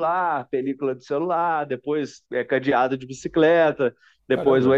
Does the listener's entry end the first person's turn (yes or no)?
no